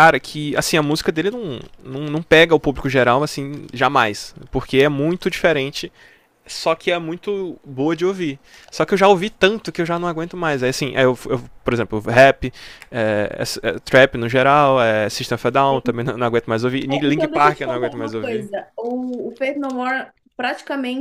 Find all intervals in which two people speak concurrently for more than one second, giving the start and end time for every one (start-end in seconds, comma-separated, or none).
16.9-18.4